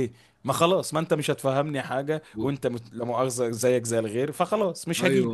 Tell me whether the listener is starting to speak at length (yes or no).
yes